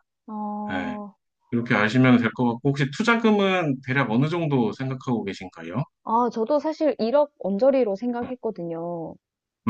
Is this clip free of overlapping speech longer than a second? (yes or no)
yes